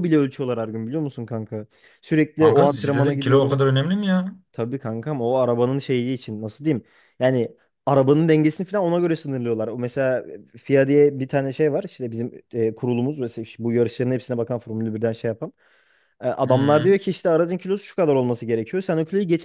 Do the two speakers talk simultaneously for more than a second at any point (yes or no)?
yes